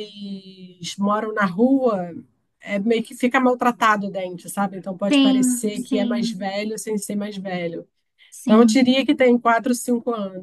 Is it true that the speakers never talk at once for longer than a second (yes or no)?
no